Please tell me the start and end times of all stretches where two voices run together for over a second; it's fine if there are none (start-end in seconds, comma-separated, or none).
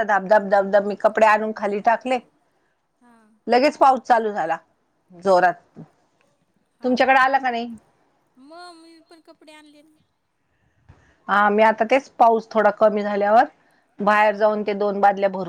none